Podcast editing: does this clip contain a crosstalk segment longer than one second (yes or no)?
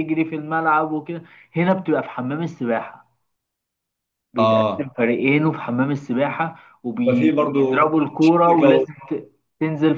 yes